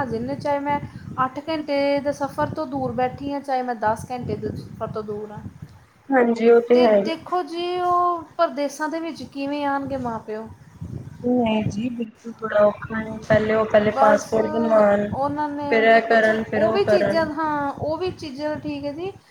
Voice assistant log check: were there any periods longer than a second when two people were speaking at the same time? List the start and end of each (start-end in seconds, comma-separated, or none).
none